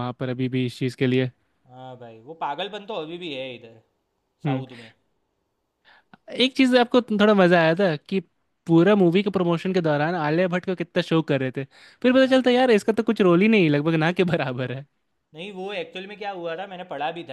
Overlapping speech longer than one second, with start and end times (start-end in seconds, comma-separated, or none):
none